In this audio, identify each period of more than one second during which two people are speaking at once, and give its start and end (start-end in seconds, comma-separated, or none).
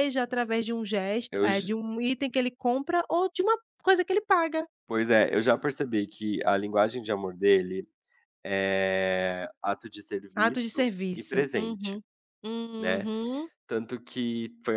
10.3-12.0